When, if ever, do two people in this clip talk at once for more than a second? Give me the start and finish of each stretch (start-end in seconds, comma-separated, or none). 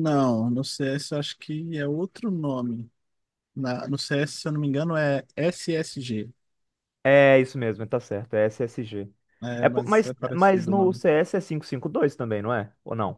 9.6-11.0